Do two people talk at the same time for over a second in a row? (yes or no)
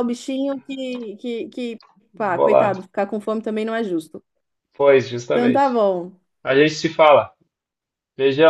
no